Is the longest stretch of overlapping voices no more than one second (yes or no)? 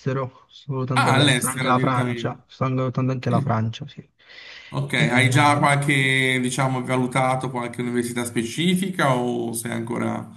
no